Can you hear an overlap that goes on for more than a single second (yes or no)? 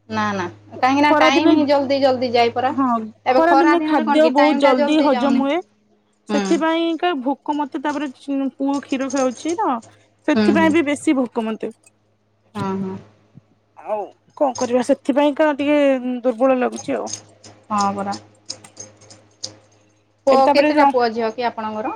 yes